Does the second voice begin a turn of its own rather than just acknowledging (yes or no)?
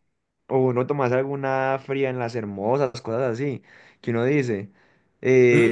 yes